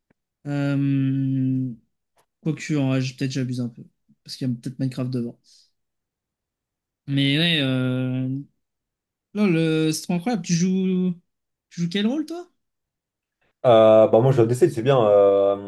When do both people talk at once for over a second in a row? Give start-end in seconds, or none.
none